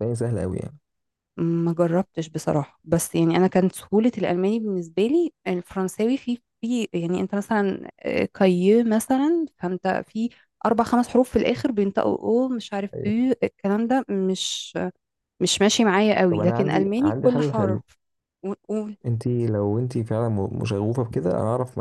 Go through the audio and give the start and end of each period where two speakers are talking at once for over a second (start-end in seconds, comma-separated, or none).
16.3-17.8